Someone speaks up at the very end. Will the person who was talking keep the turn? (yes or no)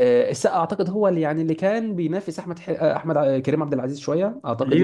no